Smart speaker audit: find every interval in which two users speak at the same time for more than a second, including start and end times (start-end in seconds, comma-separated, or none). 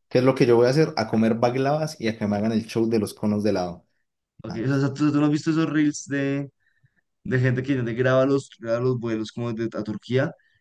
none